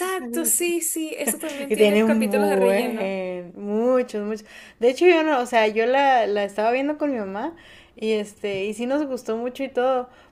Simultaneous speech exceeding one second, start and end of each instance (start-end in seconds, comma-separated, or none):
1.7-3.2